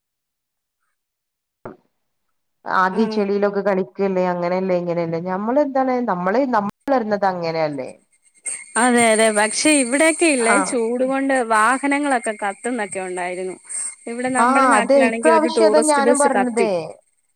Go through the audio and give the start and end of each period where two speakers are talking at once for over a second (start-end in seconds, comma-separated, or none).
14.4-16.7